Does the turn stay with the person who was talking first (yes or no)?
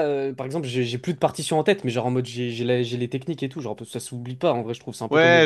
no